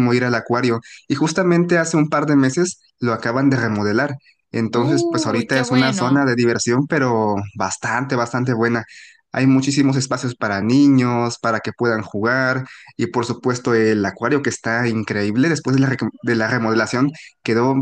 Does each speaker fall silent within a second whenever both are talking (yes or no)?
no